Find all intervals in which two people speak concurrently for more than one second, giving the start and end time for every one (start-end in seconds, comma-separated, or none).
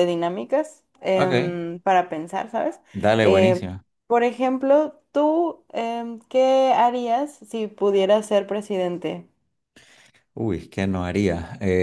none